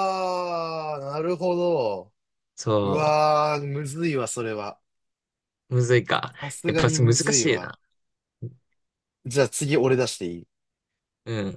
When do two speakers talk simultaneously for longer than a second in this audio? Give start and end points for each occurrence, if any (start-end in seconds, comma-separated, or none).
6.4-7.7